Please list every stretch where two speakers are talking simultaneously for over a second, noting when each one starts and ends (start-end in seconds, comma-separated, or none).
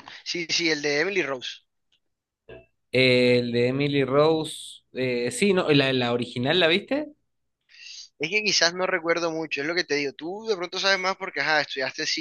none